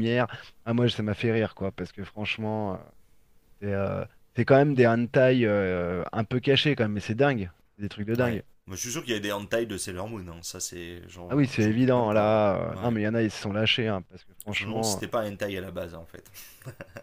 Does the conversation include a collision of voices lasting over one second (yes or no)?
yes